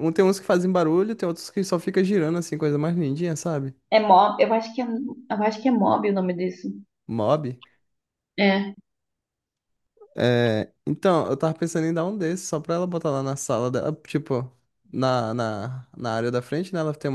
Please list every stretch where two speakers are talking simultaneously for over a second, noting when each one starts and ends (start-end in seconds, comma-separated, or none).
none